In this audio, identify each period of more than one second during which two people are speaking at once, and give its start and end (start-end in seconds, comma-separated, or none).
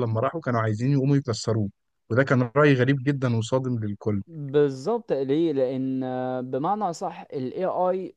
none